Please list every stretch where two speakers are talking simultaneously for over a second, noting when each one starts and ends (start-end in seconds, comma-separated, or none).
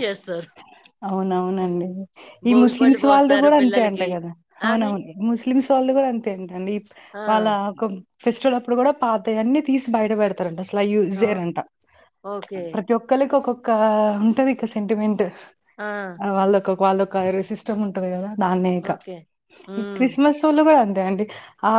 2.5-4.1